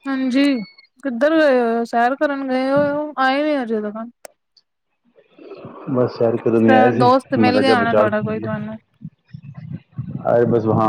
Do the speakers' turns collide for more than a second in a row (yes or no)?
yes